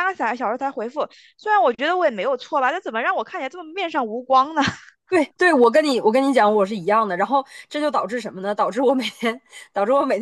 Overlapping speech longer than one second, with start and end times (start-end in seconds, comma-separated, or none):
none